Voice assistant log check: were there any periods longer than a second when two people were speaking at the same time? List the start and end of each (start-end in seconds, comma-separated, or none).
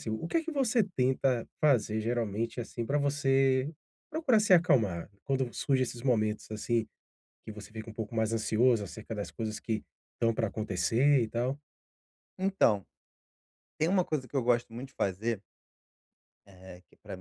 none